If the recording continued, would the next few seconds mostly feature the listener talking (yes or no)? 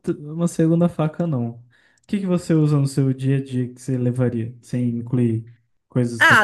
yes